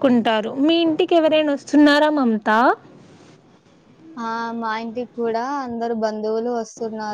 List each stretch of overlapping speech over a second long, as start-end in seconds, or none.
none